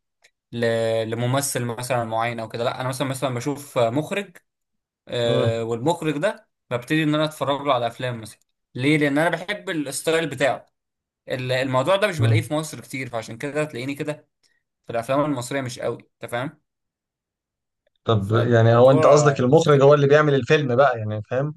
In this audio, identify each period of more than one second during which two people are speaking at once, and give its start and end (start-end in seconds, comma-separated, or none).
18.2-19.8